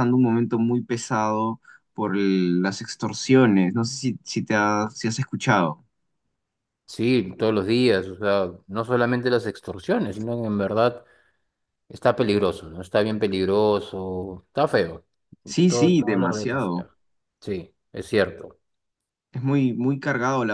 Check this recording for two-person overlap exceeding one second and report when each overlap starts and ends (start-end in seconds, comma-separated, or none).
15.7-16.9